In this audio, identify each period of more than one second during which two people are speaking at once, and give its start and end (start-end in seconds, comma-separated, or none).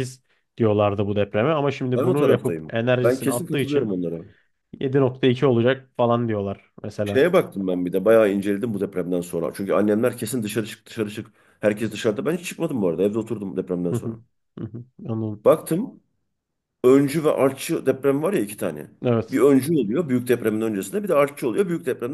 1.9-4.0